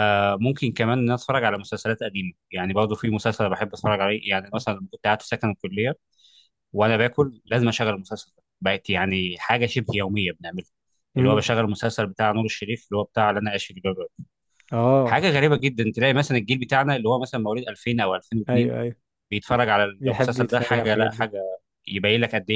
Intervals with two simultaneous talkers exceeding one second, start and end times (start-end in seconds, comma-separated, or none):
20.0-21.3